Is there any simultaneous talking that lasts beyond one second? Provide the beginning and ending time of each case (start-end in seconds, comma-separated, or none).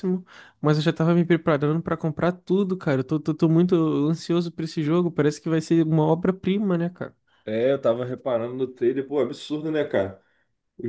none